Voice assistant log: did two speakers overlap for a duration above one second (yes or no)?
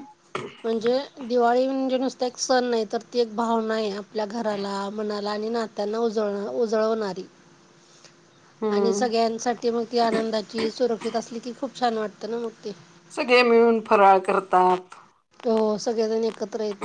no